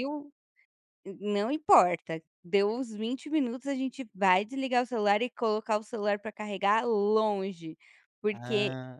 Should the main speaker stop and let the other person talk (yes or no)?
no